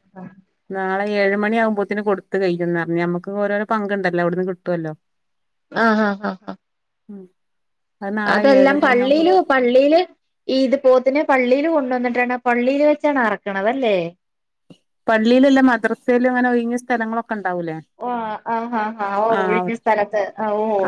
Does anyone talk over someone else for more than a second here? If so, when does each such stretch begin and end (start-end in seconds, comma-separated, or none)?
none